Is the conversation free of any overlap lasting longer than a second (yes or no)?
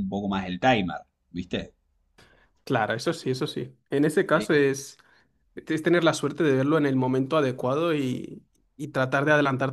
yes